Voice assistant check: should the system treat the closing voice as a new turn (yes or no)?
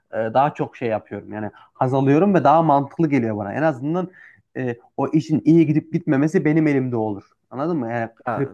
no